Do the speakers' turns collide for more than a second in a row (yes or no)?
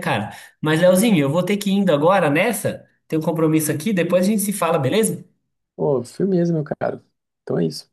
no